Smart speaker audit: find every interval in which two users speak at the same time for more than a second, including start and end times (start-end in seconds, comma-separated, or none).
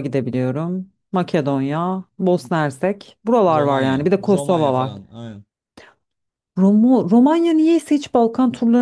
3.5-4.9